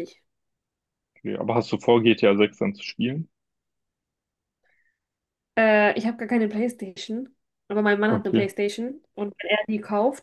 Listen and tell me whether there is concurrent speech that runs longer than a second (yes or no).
no